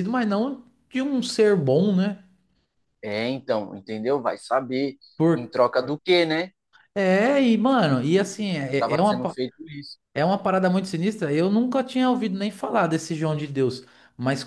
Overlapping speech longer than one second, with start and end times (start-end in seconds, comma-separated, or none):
none